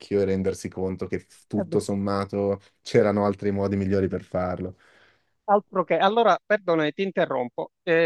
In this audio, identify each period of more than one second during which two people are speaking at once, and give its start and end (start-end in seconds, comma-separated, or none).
none